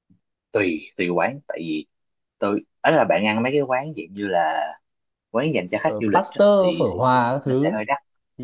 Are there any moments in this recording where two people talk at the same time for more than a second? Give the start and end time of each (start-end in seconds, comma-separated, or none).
5.8-7.8